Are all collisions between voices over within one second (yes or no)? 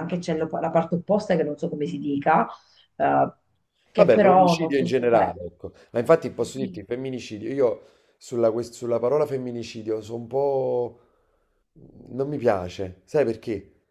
no